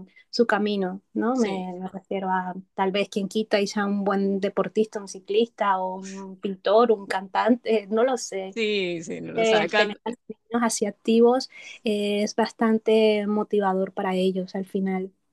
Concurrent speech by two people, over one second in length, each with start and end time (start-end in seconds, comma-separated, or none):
none